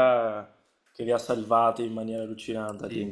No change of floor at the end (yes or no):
no